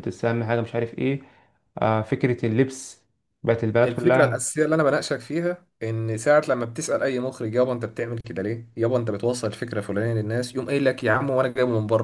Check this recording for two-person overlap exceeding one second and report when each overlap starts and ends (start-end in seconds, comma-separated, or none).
none